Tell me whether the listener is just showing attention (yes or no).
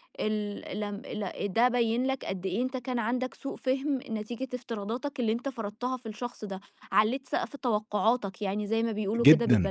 no